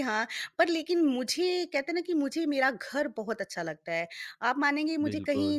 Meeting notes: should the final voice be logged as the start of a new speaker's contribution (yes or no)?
no